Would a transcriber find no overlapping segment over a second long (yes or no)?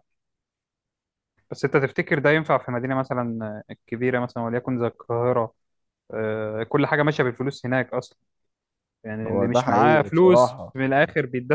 no